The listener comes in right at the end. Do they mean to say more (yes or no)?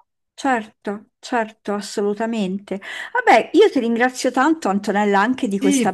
yes